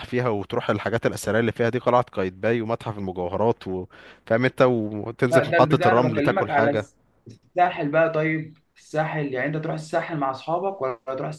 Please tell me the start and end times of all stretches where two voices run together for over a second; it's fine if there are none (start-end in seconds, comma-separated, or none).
5.3-6.9